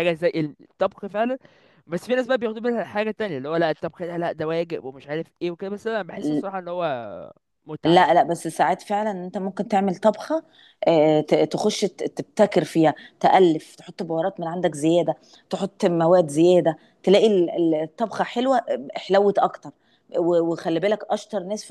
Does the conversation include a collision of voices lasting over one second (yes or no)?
no